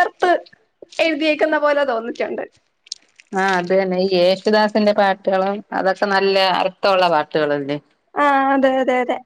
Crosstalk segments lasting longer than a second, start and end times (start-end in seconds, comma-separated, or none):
none